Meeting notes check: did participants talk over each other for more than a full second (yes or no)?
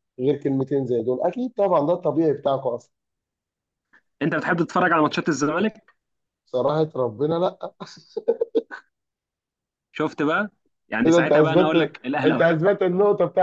yes